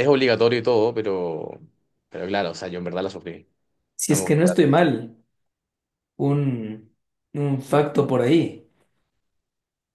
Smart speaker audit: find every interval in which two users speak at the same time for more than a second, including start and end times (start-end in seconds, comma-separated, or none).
none